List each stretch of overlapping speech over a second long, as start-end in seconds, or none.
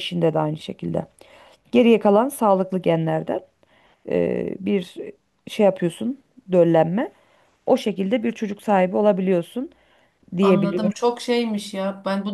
none